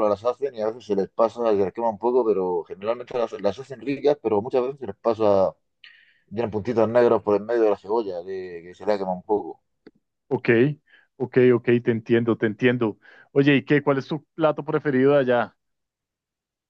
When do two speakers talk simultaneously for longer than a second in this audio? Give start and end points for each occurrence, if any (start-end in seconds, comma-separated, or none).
none